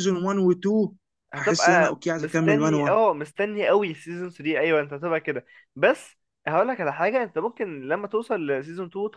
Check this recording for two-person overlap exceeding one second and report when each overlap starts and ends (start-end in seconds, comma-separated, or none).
1.4-3.0